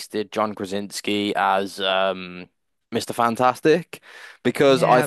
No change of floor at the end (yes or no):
yes